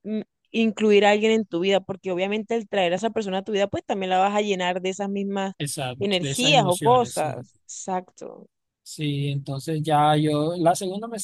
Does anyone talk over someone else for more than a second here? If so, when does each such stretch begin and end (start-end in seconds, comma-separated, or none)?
6.0-7.5